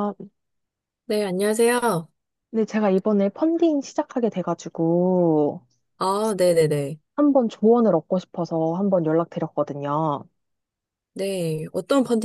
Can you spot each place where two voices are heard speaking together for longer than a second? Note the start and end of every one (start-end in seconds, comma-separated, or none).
none